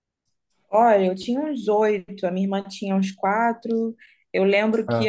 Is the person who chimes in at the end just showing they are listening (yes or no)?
yes